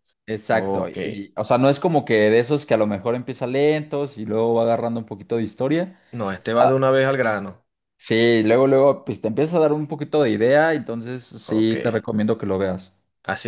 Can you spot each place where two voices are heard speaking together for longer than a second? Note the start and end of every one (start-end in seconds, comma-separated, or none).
none